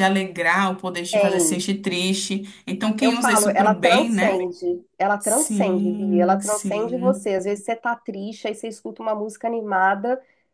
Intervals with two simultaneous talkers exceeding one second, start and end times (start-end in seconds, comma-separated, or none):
3.0-4.4, 5.2-7.3